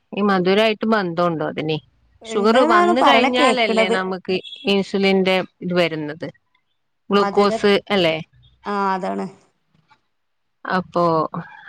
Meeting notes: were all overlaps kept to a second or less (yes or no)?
no